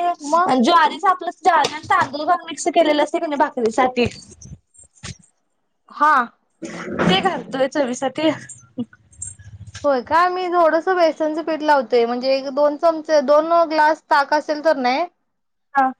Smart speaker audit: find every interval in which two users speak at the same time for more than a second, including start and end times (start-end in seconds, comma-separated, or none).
none